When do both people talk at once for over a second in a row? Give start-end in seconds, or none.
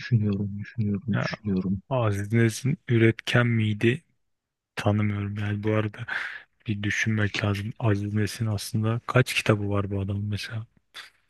none